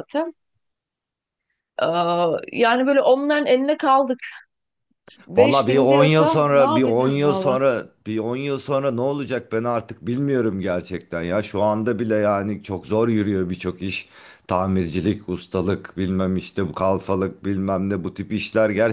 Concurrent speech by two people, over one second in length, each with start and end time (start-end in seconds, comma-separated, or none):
5.4-7.6